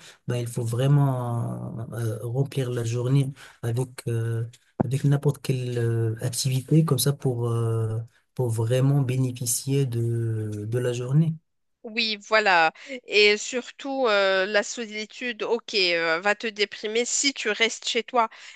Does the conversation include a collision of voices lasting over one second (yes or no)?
no